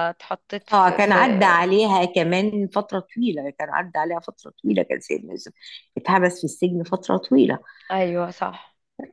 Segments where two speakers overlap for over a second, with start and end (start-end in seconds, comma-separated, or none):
none